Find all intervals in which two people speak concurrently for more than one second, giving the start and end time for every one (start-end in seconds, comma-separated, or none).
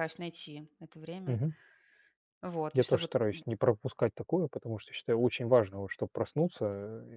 none